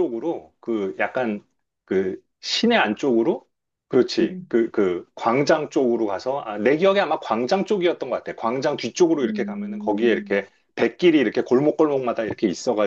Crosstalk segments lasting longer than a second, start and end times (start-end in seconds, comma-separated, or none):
9.2-10.4